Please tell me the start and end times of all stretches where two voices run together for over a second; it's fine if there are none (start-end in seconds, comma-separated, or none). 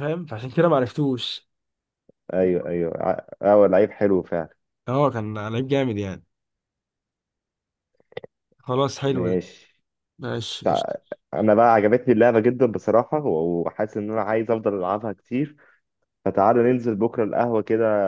none